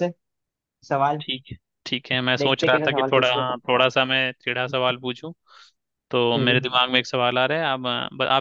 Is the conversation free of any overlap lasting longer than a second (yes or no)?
no